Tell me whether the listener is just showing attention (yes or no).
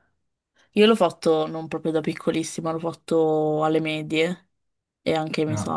yes